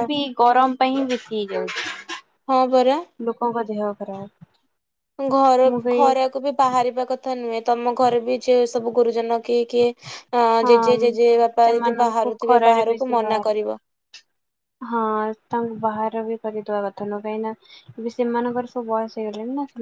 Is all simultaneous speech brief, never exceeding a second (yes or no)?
no